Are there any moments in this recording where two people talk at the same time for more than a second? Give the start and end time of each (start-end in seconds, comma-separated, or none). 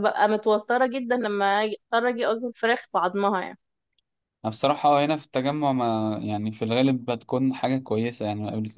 none